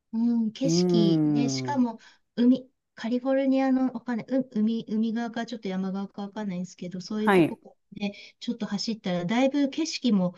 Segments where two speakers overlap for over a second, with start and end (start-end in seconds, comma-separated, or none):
0.6-1.9